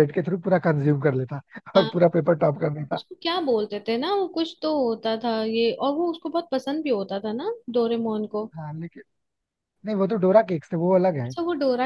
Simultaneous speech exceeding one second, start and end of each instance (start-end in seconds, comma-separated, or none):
none